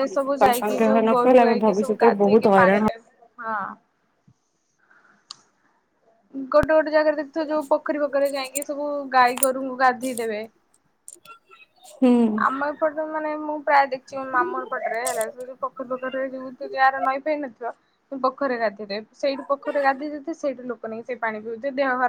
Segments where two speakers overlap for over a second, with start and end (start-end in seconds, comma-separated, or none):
0.6-2.9